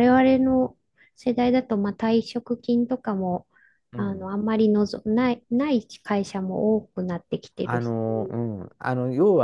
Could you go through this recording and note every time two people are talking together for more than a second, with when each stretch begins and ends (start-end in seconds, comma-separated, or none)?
none